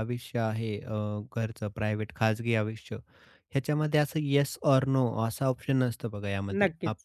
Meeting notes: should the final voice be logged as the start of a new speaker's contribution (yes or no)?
no